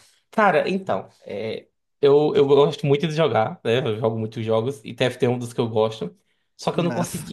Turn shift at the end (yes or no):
no